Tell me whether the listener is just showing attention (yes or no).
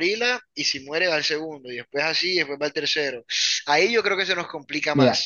no